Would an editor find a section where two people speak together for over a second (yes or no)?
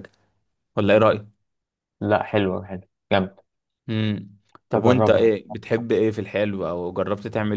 no